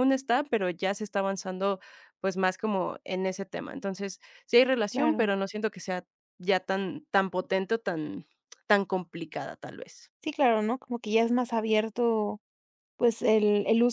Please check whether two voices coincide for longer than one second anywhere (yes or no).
no